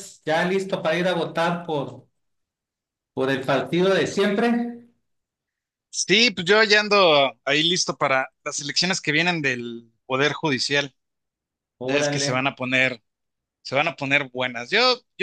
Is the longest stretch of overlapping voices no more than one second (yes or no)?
yes